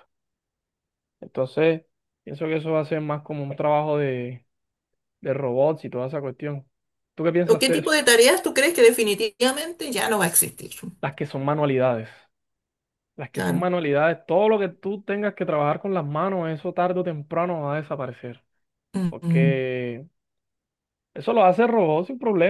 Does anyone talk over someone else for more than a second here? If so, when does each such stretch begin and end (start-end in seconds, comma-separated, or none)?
none